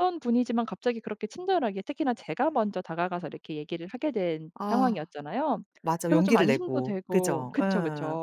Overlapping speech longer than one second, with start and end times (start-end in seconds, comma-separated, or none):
6.0-7.6